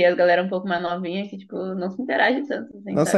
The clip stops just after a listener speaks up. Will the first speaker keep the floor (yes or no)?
no